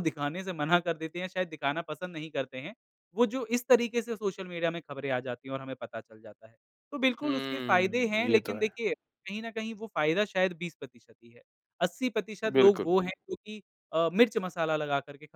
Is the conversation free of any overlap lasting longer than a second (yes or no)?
no